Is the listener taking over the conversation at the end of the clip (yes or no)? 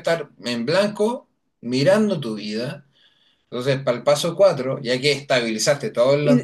yes